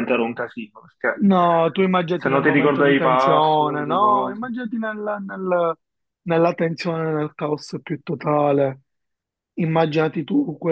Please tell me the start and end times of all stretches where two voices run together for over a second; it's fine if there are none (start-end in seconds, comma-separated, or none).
2.2-4.5